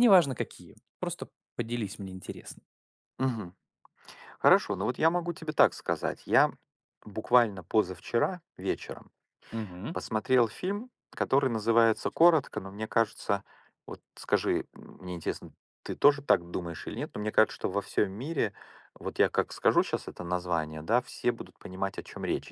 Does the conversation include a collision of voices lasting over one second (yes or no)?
no